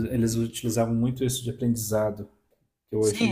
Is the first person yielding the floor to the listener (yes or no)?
yes